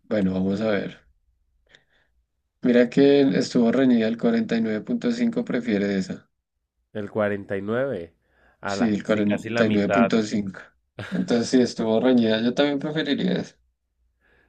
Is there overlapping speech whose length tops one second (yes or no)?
yes